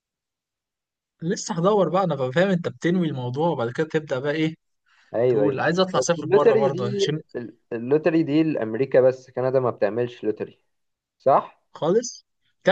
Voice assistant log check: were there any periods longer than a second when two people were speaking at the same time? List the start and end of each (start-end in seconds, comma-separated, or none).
5.3-7.1